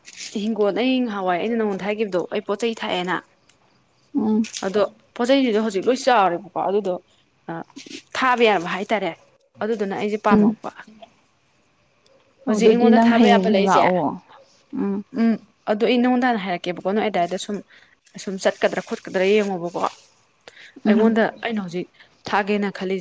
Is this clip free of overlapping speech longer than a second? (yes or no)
no